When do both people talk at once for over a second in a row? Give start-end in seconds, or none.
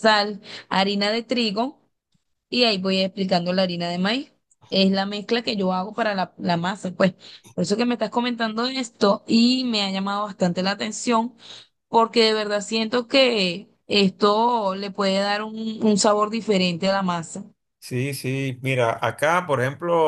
none